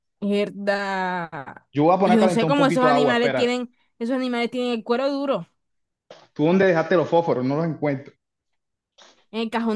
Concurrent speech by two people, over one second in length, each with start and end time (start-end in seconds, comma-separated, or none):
2.0-3.5